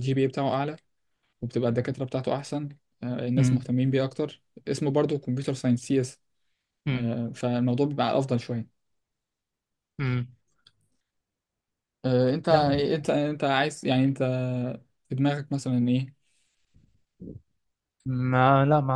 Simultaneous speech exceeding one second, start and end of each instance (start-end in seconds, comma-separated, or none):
none